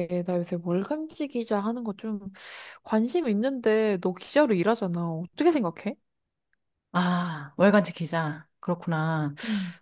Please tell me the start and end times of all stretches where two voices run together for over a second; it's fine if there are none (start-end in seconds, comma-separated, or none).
none